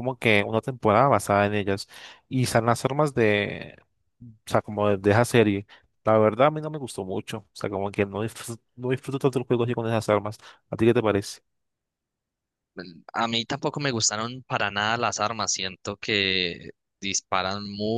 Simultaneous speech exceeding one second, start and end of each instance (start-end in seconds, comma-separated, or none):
none